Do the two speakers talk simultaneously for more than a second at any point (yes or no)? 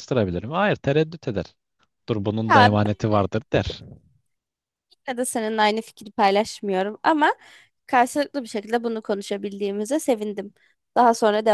no